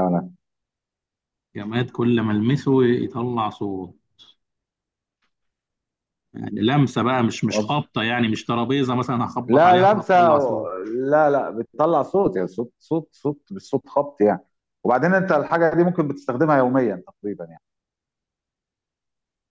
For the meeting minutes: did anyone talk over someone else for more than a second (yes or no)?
yes